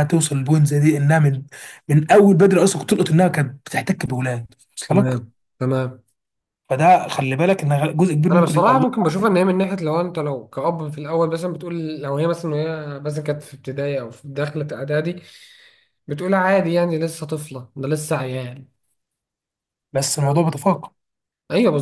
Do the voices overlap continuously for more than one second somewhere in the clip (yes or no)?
no